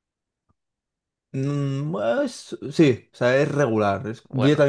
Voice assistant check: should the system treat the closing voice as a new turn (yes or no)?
no